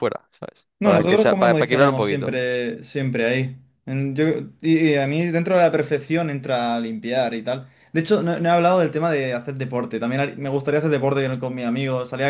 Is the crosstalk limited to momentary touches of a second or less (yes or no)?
no